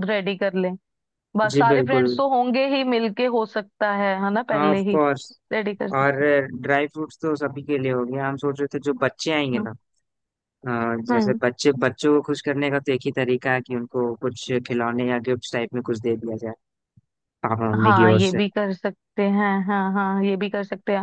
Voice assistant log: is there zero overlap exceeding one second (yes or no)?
yes